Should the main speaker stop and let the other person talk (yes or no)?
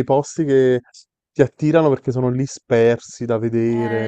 yes